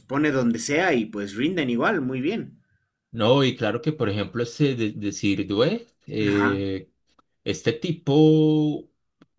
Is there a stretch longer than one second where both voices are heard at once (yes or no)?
no